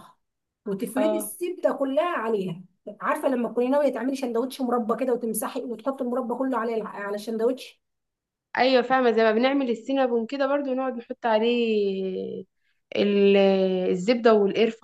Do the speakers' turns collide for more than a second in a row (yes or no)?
no